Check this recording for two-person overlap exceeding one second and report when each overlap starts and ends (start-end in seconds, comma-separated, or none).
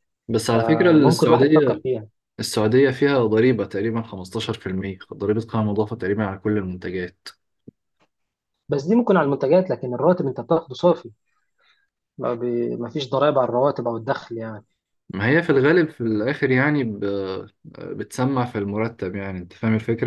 0.5-1.8